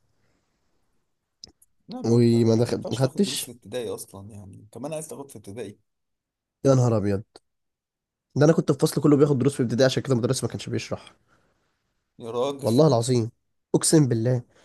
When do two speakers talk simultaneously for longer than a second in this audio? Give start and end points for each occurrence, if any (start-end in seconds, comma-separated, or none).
2.0-3.5